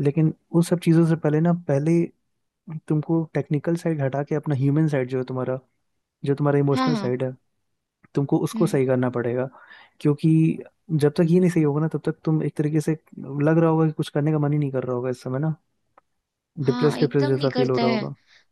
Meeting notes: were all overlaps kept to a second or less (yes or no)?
no